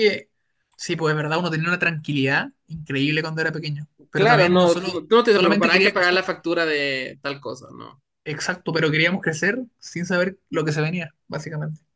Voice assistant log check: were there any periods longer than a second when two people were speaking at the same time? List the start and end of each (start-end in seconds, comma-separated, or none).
4.1-6.2